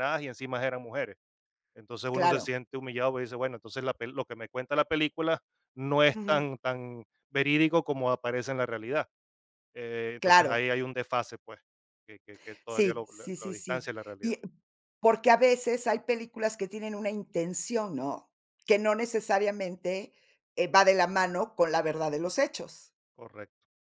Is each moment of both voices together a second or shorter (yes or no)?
no